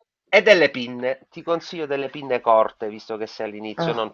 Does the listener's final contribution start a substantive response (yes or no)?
no